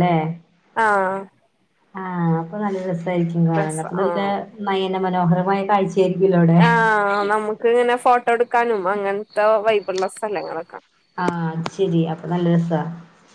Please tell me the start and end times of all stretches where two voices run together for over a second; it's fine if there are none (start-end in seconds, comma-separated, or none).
none